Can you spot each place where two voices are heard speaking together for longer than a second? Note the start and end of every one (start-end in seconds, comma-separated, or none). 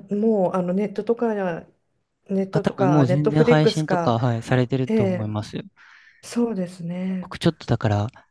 2.5-4.2